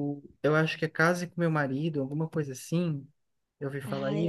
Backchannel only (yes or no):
no